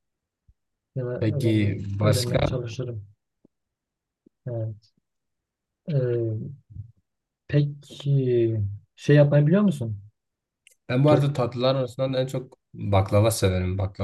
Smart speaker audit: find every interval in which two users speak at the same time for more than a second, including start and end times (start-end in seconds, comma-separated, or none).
1.2-2.6